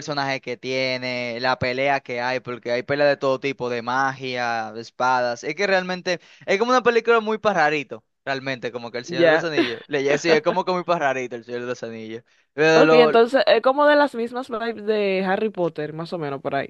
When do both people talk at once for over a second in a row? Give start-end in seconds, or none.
none